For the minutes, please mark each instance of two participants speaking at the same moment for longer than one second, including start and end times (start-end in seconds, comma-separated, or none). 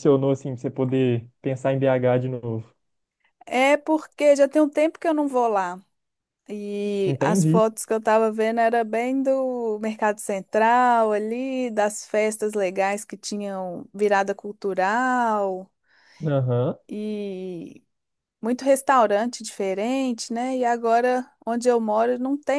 none